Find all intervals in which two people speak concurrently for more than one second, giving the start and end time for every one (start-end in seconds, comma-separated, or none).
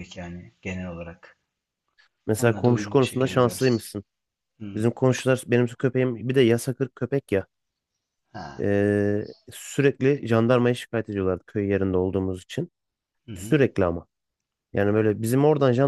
2.4-3.8